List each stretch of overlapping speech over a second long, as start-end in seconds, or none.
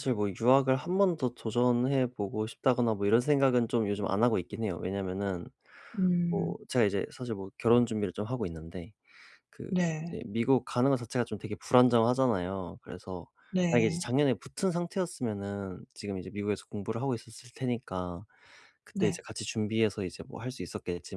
none